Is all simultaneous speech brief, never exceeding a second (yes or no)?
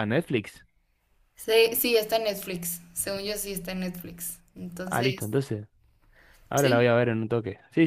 yes